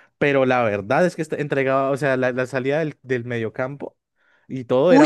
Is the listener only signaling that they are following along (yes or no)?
no